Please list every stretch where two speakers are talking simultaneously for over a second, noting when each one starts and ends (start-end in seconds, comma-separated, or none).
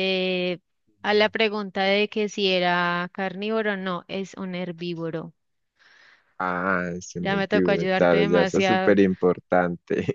7.2-9.0